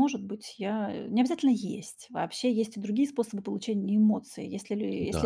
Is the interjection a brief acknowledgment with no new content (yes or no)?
yes